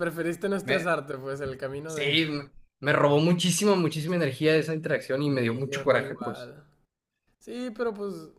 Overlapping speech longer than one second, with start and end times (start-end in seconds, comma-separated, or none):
5.3-6.5